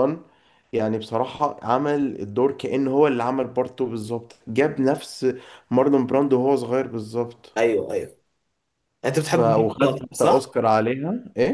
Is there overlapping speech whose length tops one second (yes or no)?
yes